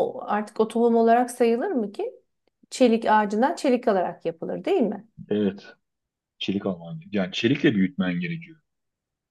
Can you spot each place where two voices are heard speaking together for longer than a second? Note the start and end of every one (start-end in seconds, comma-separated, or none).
none